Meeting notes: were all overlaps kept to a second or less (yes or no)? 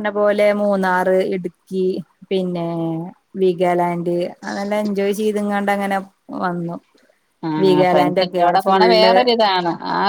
no